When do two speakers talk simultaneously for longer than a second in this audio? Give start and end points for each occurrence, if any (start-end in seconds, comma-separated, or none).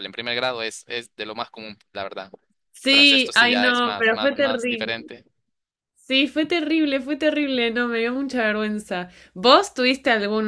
2.9-5.0